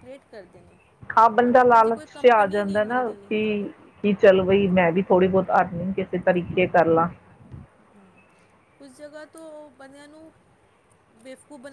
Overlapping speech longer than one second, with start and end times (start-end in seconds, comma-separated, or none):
1.5-3.3